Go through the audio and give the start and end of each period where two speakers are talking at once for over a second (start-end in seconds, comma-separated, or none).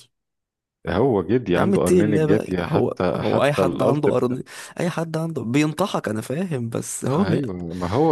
1.6-4.0